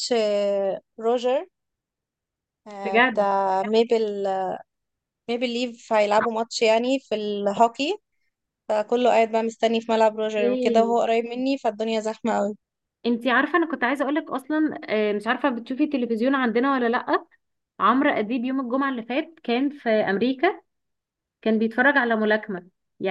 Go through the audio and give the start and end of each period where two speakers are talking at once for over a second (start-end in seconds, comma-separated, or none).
none